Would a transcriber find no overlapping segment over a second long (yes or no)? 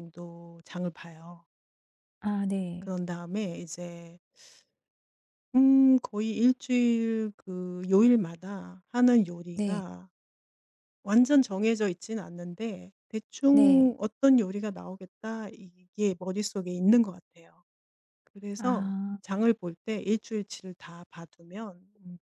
yes